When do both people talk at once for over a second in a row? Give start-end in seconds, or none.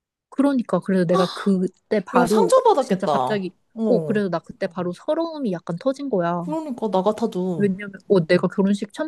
2.1-4.2